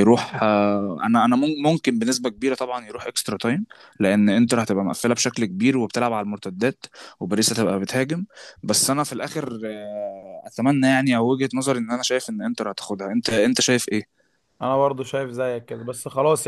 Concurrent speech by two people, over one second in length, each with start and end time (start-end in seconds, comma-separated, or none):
none